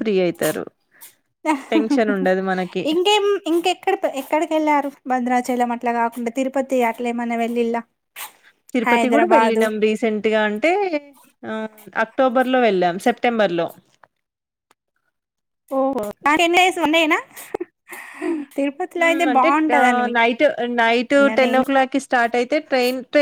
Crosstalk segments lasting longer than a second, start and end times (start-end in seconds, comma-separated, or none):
none